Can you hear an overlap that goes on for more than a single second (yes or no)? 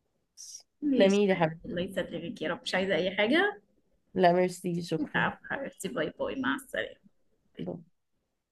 no